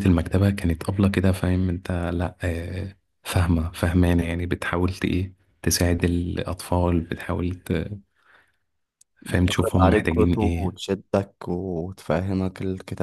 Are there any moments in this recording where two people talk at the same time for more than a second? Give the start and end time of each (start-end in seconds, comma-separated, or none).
9.2-10.8